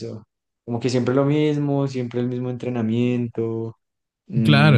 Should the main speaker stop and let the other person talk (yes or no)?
yes